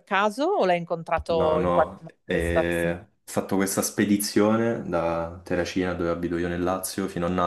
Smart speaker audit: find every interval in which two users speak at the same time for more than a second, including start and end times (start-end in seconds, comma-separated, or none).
1.3-3.0